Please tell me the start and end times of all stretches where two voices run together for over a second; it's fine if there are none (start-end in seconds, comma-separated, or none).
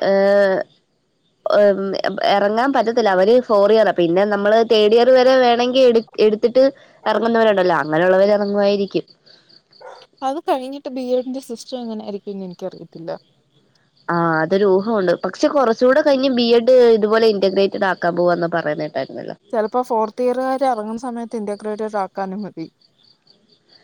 none